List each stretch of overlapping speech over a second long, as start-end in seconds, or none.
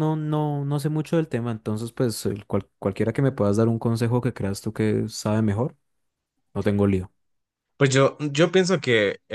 none